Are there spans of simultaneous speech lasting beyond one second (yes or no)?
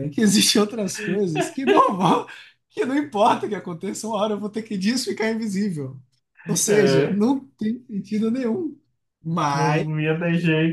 no